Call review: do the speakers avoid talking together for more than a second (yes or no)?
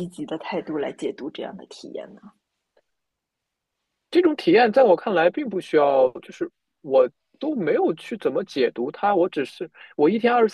yes